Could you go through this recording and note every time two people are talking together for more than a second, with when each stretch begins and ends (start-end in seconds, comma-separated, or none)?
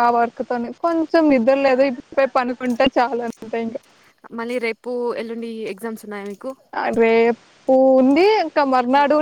none